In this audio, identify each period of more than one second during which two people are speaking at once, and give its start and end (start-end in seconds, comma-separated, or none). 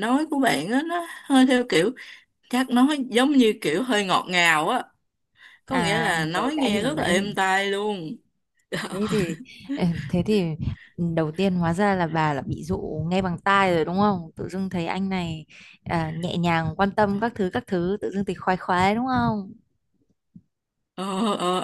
5.7-7.3